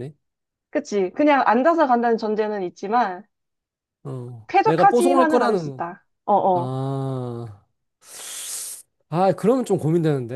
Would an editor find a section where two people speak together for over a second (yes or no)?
yes